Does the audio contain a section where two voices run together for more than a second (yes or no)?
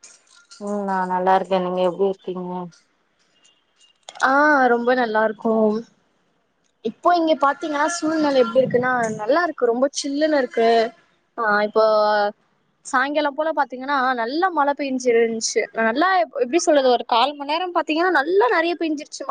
no